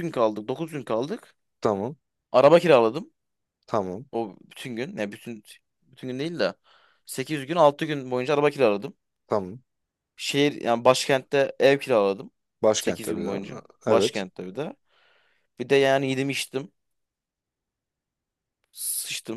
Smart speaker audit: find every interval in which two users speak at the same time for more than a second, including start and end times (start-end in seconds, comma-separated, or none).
12.8-14.2